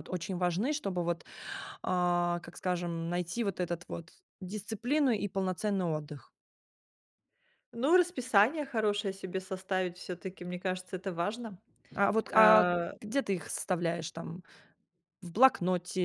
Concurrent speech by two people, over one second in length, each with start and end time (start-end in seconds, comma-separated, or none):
none